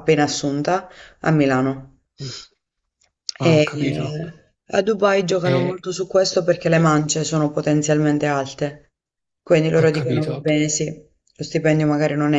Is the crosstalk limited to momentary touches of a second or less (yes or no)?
yes